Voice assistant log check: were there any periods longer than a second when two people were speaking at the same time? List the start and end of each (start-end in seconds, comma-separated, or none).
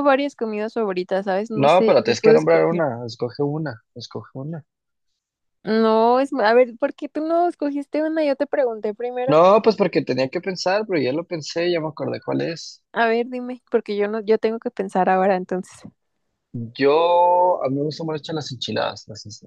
1.5-2.8